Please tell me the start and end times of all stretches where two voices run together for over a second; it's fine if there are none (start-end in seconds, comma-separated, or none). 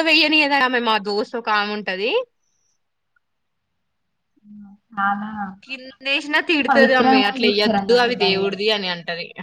6.7-8.5